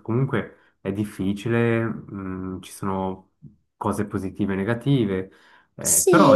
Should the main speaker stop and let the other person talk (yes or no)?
yes